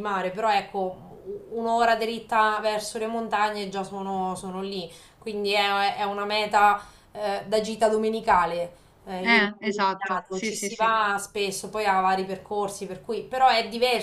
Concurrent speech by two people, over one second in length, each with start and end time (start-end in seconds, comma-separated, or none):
9.2-10.9